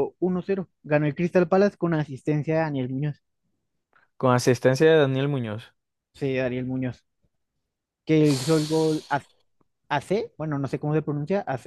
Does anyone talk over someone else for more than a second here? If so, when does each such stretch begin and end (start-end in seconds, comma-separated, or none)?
none